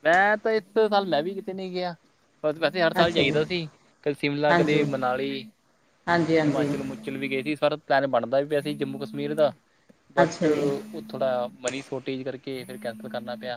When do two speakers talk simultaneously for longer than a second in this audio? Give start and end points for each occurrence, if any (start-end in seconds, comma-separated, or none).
none